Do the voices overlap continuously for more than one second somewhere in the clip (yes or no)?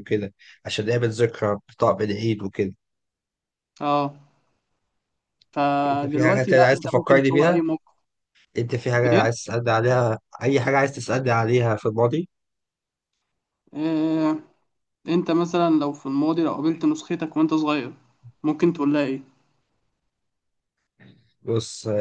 yes